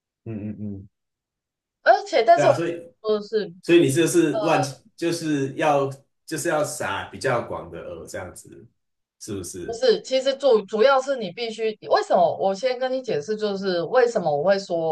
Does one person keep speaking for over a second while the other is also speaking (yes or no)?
no